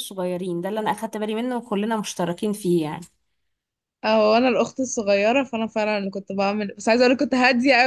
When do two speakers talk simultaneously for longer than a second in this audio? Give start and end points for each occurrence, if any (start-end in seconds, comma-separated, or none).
none